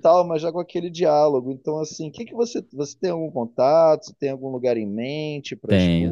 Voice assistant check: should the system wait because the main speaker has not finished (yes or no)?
no